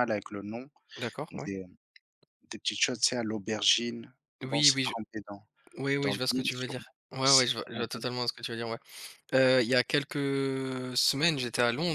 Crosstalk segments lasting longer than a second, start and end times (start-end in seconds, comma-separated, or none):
6.0-8.0